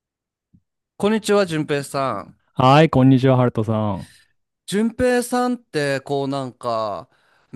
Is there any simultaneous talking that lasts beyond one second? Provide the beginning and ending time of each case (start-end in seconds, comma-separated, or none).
none